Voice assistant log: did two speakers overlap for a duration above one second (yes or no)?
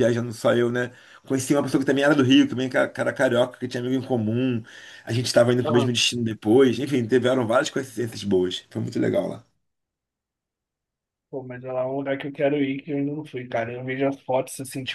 no